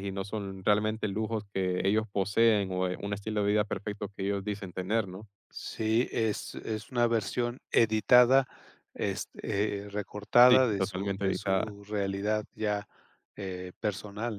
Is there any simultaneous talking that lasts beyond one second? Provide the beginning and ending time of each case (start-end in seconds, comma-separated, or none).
10.5-11.7